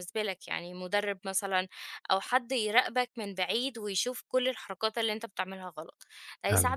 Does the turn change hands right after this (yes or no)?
no